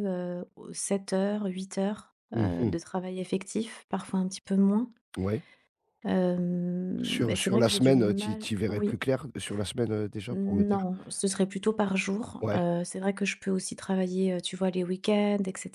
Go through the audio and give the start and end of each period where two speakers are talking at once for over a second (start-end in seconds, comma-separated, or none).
7.0-9.0